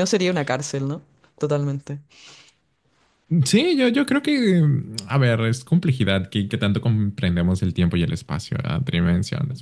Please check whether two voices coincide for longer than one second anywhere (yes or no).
no